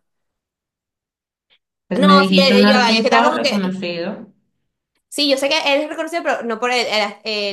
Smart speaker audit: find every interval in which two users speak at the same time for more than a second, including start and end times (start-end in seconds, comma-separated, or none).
1.9-3.8